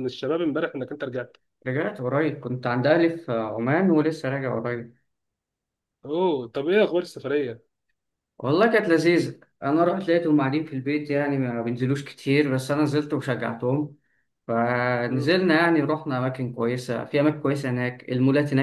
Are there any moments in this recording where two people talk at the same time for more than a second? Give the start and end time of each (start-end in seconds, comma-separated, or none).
none